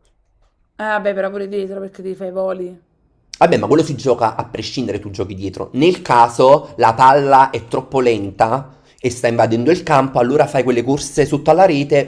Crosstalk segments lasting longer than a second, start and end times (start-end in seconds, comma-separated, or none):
none